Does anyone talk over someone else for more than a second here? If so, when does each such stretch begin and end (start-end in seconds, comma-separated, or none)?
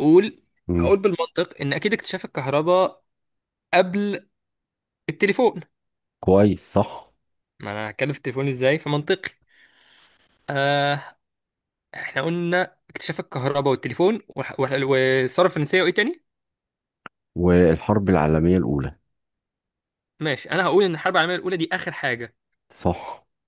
none